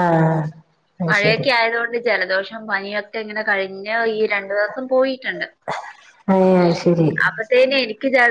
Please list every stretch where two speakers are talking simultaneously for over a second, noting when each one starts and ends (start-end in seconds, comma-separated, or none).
none